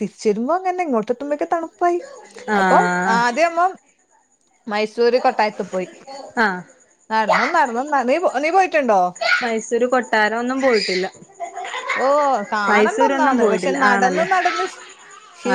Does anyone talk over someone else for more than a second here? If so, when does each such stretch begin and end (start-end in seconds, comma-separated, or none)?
12.7-14.3